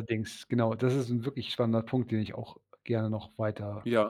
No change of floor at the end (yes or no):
yes